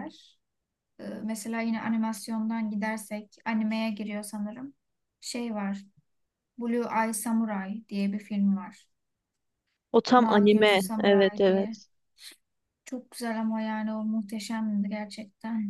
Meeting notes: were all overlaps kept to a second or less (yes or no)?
no